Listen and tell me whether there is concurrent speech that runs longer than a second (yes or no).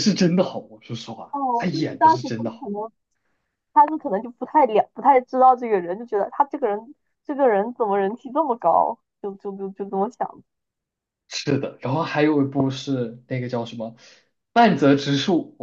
yes